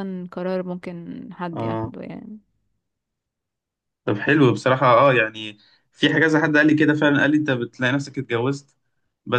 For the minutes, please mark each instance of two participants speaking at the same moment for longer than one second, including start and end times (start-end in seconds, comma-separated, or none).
none